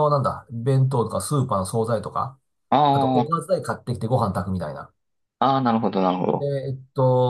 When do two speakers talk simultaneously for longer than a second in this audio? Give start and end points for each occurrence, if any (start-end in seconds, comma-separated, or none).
none